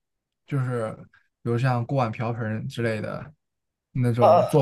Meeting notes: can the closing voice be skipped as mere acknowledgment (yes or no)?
yes